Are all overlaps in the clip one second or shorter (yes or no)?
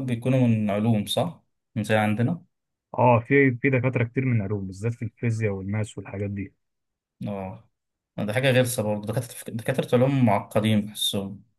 yes